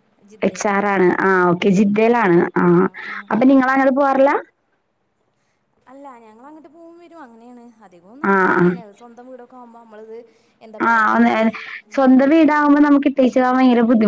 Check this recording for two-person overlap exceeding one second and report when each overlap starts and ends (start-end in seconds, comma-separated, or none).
none